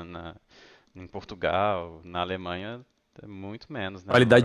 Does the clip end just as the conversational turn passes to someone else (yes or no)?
yes